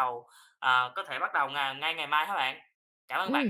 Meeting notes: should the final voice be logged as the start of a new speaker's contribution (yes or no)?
yes